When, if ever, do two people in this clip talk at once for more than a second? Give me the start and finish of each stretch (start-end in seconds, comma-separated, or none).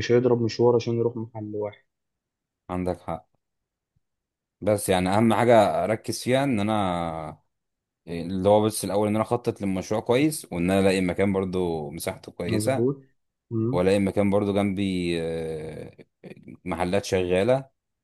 none